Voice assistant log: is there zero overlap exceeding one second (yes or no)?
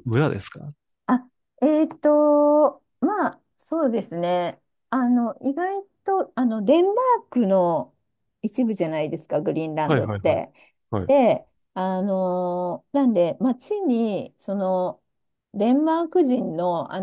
yes